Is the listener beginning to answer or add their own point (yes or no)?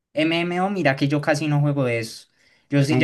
no